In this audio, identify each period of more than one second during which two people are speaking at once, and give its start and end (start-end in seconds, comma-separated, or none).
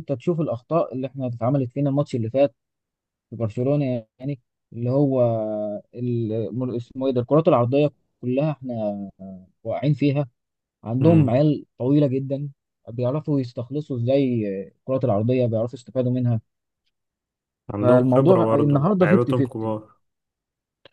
17.8-19.8